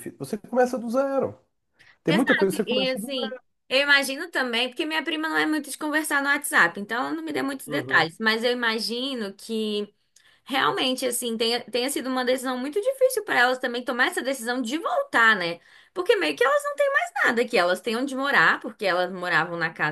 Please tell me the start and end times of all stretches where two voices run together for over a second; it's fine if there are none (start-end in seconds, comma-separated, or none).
2.1-3.4